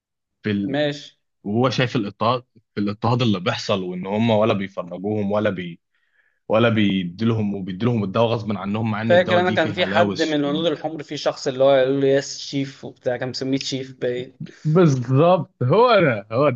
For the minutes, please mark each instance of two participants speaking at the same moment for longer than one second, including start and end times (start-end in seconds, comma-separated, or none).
9.0-10.5